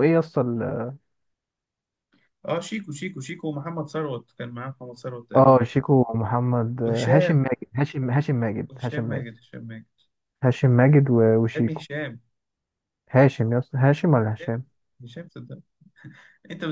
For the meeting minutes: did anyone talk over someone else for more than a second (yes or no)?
no